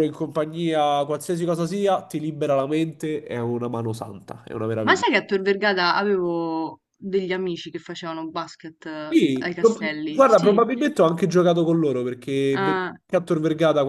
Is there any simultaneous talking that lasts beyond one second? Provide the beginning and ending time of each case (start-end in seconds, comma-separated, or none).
9.1-10.6